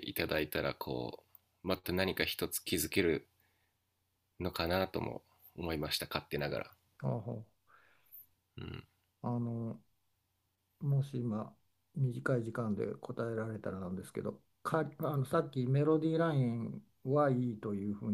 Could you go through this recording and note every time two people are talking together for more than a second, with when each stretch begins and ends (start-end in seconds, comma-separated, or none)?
none